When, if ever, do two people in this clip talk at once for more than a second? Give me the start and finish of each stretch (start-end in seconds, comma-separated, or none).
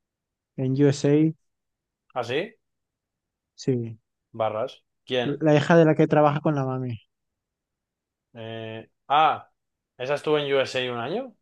none